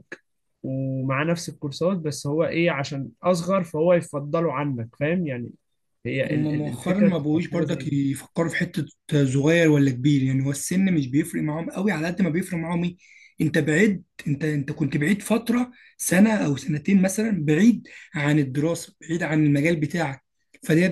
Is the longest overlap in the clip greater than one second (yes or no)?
yes